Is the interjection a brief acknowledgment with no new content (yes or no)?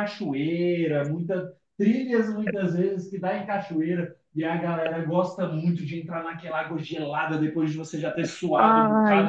yes